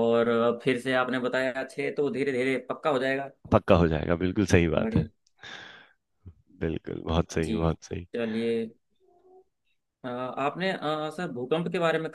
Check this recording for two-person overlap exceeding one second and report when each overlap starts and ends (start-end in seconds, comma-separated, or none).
none